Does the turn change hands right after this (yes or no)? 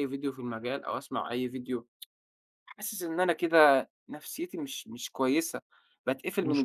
no